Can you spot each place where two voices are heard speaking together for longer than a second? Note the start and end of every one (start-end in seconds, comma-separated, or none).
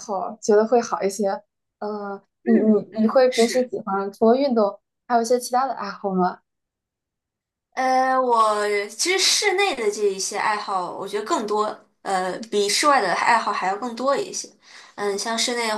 2.4-3.7